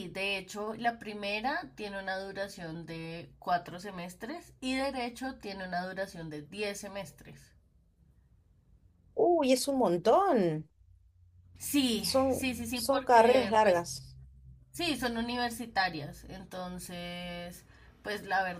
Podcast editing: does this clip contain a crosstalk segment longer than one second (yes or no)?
yes